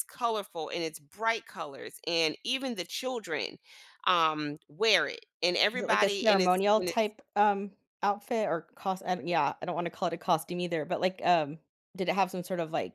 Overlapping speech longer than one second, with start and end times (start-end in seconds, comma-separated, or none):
5.7-7.1